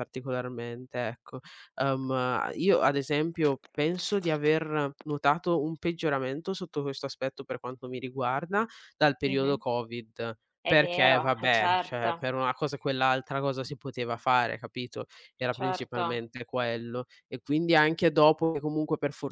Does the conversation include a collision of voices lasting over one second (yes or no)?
yes